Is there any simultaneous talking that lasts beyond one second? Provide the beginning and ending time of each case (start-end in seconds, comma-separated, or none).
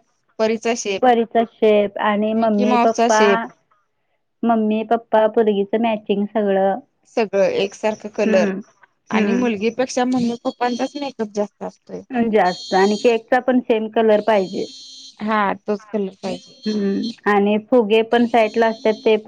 none